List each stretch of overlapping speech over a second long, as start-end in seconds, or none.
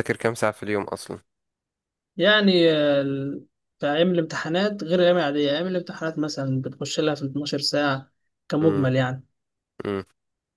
none